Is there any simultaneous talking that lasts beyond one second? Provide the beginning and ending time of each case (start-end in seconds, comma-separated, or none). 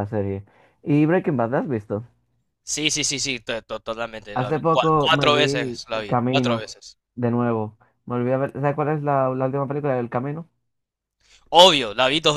4.3-6.7